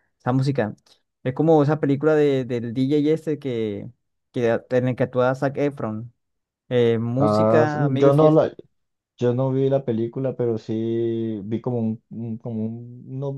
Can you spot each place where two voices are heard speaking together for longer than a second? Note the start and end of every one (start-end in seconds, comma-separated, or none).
7.2-8.5